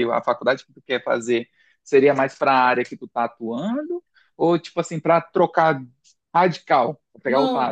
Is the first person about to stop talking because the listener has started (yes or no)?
yes